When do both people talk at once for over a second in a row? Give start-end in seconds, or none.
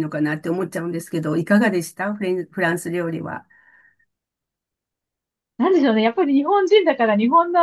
none